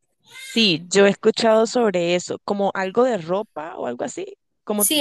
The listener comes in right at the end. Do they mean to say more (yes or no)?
yes